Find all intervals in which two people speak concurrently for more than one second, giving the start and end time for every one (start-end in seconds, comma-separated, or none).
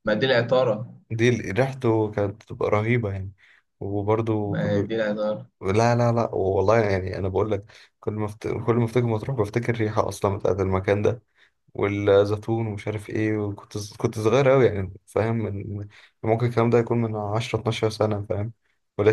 none